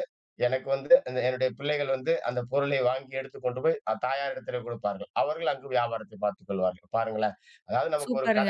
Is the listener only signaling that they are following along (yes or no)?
no